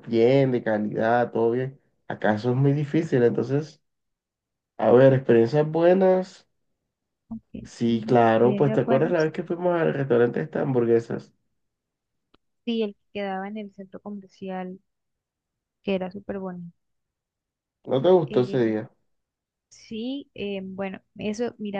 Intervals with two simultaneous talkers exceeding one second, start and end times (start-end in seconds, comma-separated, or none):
7.6-9.3